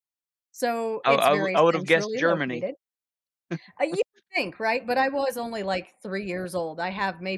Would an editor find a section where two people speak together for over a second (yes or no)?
yes